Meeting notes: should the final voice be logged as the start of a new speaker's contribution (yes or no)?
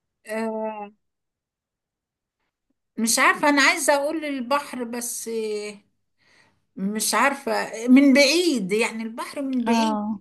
yes